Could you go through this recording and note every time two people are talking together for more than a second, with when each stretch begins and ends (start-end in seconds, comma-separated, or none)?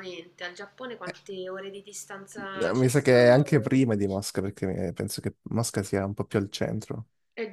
2.3-3.9